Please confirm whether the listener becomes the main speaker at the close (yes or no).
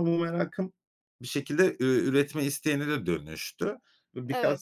no